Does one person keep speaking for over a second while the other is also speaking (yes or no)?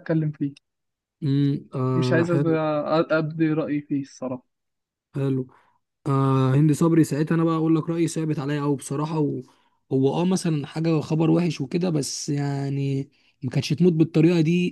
no